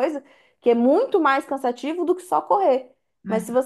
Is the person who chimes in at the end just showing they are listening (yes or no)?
yes